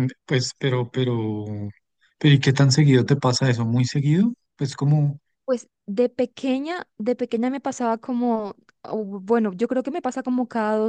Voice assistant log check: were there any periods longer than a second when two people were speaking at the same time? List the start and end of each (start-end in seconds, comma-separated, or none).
none